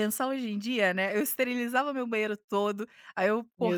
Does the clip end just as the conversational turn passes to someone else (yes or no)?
no